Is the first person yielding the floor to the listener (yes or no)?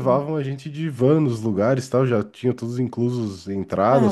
no